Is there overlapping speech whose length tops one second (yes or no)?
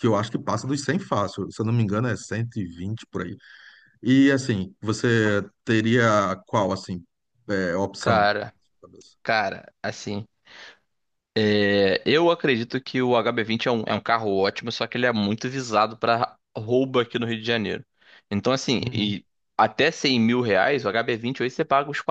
no